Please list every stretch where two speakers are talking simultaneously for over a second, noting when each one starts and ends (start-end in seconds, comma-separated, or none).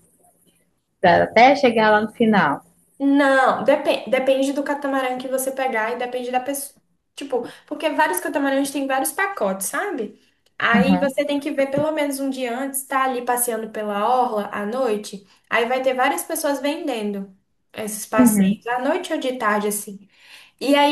none